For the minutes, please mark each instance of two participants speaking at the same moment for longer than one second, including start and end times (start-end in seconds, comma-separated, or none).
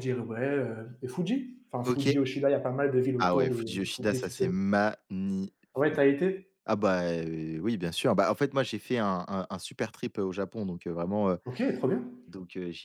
3.2-4.5